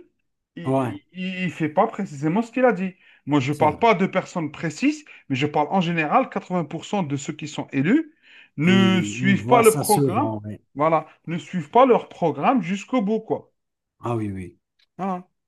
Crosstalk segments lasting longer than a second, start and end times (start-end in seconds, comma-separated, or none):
8.6-10.3